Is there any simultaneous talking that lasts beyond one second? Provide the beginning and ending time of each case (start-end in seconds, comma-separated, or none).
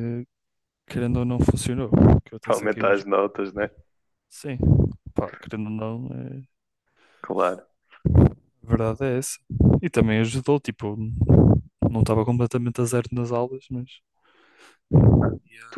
none